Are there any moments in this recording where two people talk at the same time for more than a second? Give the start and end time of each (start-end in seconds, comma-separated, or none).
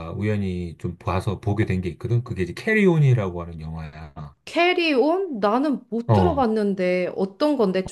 none